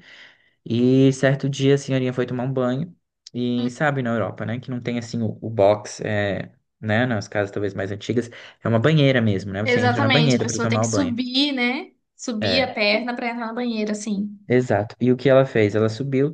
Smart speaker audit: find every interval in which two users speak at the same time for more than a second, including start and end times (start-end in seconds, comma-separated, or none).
9.6-11.1